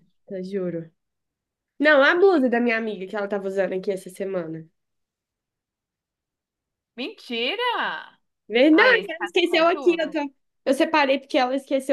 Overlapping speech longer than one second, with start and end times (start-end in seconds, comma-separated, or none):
8.7-10.2